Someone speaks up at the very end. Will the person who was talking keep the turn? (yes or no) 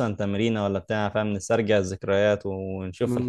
no